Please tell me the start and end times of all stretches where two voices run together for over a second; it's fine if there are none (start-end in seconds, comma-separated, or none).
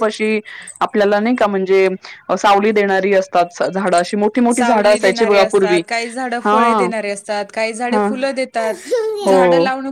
4.5-5.8